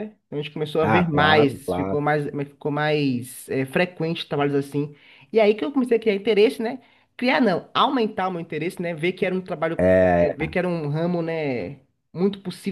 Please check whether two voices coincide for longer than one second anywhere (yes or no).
yes